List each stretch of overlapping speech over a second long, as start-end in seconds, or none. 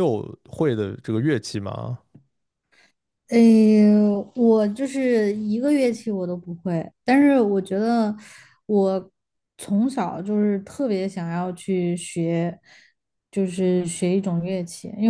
none